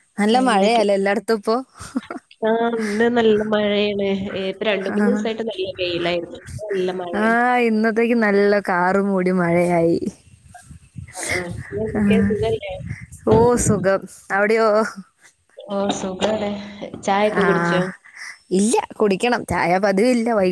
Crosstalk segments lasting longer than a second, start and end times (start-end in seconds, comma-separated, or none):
none